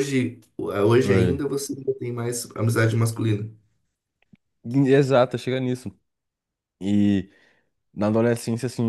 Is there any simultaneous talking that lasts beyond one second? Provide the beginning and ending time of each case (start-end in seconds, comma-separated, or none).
none